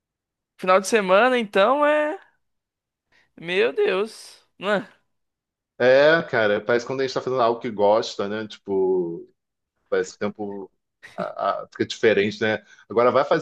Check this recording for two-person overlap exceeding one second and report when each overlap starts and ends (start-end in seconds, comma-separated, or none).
none